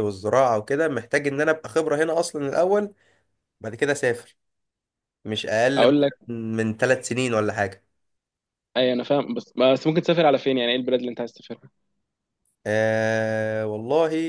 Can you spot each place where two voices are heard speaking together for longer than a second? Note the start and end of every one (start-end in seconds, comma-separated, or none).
none